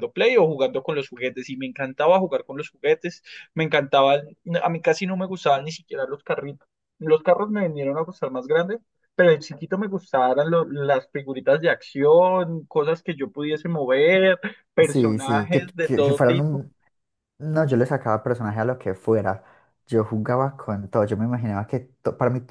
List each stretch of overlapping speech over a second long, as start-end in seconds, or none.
14.8-16.6